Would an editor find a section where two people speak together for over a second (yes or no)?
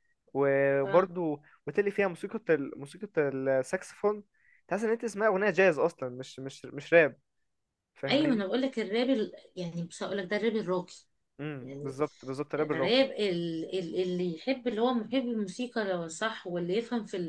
no